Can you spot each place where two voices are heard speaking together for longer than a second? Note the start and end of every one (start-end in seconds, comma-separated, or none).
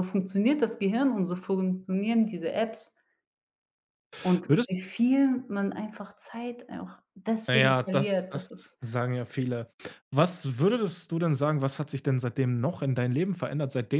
7.5-8.8